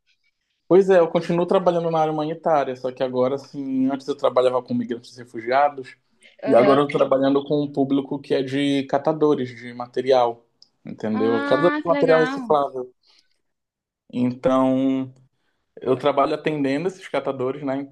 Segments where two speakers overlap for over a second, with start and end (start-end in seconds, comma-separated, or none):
11.1-12.5